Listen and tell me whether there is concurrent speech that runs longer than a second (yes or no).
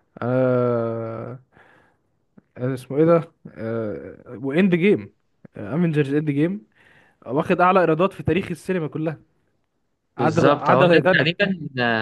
yes